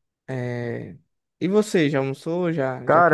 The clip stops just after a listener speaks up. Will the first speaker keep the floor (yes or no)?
no